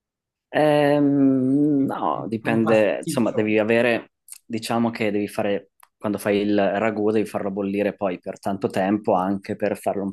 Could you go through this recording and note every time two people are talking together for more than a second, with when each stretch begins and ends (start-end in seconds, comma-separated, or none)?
1.8-3.4